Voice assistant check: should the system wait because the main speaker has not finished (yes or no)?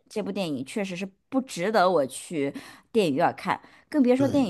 yes